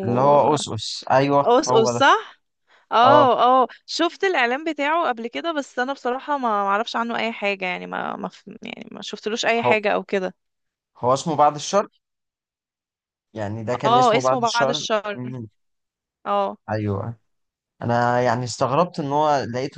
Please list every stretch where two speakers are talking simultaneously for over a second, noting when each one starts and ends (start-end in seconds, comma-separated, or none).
13.8-15.3